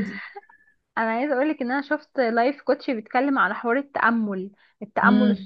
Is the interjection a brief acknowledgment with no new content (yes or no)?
yes